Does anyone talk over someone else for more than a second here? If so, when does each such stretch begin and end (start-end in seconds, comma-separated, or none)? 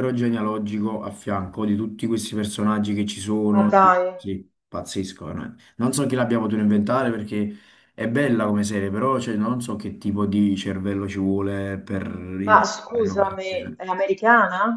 12.4-13.8